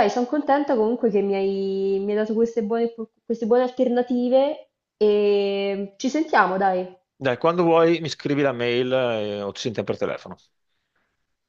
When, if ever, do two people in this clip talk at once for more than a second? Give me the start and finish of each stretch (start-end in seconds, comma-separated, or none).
none